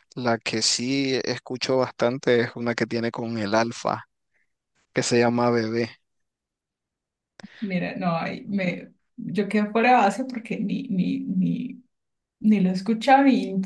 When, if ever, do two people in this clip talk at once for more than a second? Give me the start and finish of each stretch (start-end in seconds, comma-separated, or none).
none